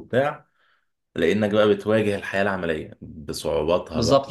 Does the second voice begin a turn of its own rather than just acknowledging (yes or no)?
yes